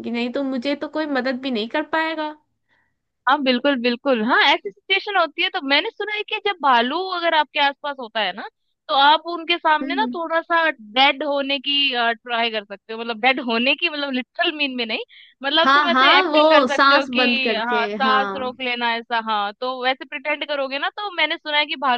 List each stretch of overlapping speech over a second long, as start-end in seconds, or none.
15.6-18.6